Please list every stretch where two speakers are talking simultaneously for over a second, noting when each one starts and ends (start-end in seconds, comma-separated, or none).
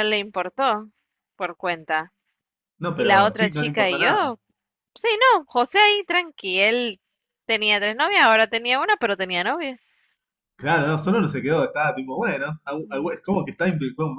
2.9-4.4